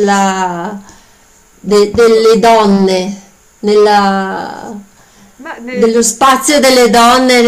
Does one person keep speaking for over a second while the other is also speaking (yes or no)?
yes